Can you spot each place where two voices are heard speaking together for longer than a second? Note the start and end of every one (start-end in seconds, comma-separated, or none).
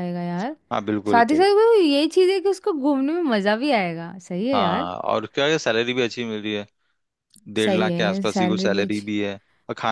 7.6-9.0